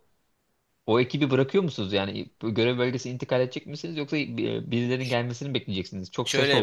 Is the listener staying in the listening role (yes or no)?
no